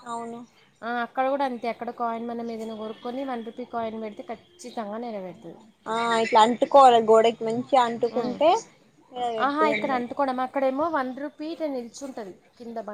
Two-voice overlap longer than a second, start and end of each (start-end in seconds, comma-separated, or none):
none